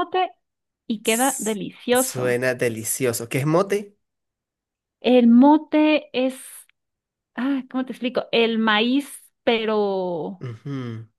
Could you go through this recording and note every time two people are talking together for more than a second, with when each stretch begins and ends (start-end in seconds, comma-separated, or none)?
1.0-2.4